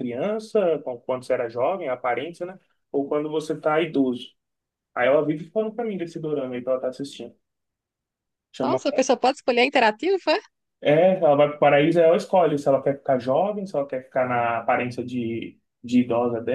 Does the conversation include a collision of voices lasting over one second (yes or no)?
no